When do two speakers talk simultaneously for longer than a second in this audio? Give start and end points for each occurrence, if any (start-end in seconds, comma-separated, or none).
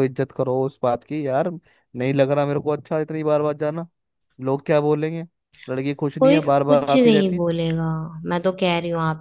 6.2-7.4